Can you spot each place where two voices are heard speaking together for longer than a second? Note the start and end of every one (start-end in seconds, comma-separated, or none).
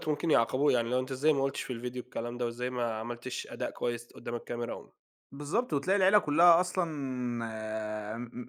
none